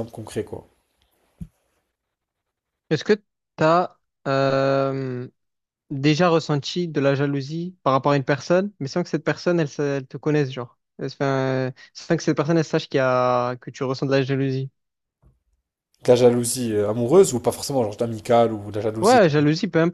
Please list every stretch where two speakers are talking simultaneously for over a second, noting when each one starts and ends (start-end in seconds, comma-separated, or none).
none